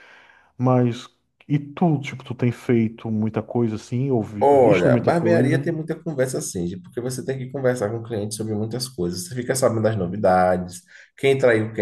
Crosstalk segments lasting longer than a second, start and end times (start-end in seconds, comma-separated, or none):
4.4-5.7